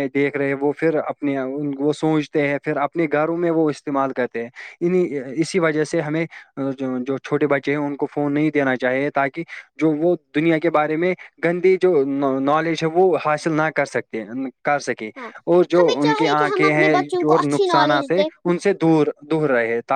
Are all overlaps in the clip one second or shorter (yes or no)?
no